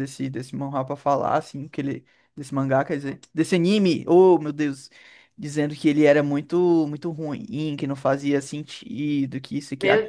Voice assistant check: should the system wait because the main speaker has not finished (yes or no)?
no